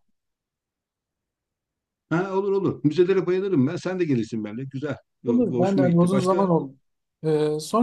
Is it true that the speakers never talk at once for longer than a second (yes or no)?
no